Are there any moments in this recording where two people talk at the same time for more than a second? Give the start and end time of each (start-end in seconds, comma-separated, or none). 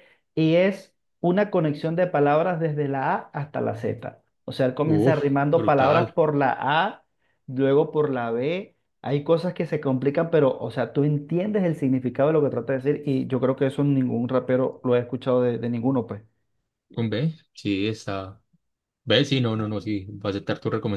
4.8-6.2